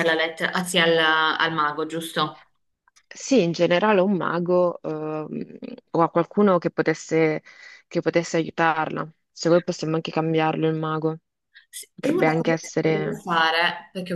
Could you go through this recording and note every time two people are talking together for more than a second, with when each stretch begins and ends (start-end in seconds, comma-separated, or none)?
11.9-13.2